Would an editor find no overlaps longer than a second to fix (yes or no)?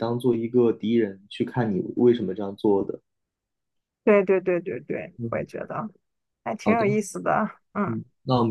yes